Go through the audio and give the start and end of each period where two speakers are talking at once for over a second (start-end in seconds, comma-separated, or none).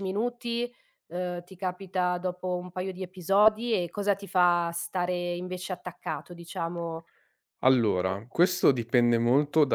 none